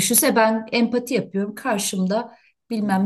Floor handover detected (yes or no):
no